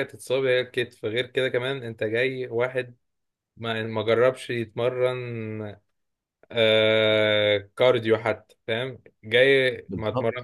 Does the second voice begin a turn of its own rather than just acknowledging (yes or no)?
no